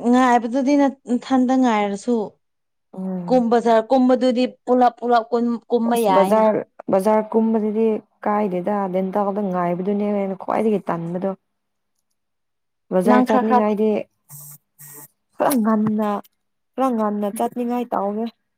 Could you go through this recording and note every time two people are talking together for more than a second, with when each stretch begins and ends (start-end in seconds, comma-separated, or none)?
none